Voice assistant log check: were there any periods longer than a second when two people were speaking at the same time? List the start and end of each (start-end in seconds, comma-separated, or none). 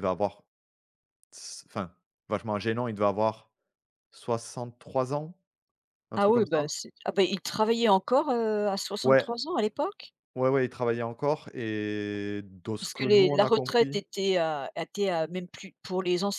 12.8-14.0